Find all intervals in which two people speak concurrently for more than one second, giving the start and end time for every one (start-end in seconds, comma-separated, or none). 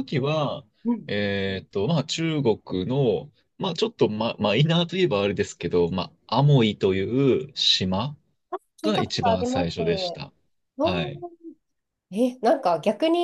8.8-10.2